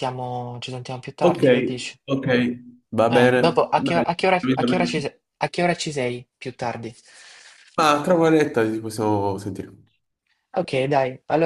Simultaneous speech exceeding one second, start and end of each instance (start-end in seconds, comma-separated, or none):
3.1-5.0